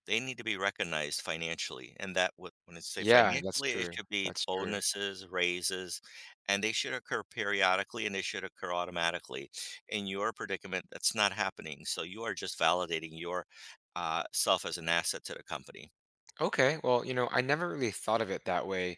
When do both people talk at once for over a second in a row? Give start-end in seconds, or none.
3.0-4.8